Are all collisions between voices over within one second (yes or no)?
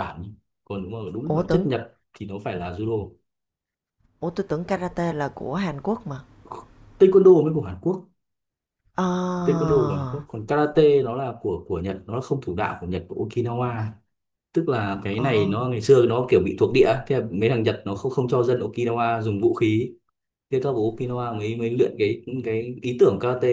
yes